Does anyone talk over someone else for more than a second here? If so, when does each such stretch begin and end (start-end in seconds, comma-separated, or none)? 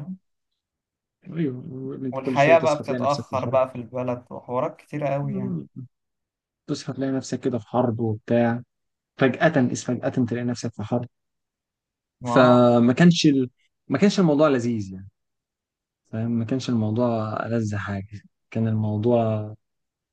2.1-3.6